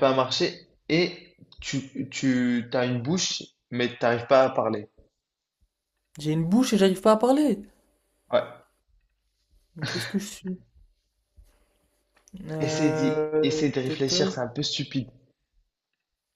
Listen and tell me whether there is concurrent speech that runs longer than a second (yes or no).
yes